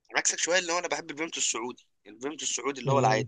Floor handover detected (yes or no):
yes